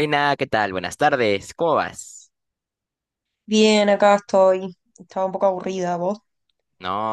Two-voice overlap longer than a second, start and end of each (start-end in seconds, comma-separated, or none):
none